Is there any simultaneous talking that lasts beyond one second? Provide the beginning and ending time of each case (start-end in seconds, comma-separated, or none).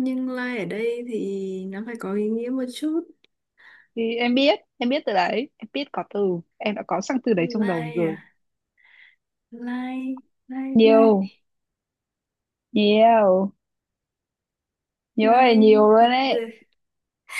15.2-16.5